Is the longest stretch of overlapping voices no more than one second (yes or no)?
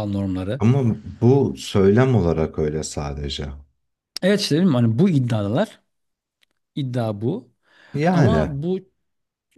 yes